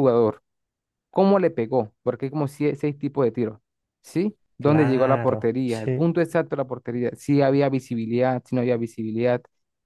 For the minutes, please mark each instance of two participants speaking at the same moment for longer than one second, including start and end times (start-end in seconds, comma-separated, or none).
4.6-6.1